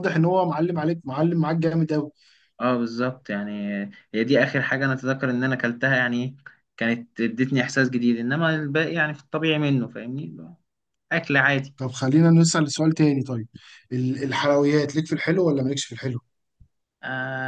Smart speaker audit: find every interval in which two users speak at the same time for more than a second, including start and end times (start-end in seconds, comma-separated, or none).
none